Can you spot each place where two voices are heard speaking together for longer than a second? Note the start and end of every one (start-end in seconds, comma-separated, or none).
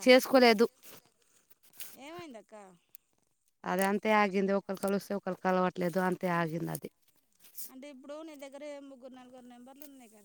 none